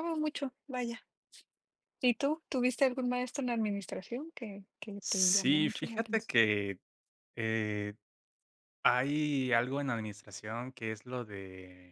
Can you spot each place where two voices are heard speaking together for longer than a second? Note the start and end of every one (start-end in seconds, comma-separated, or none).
5.0-6.3